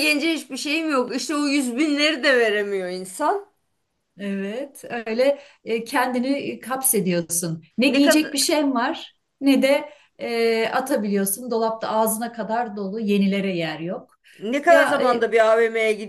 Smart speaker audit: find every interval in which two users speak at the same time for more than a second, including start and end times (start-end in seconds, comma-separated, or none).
none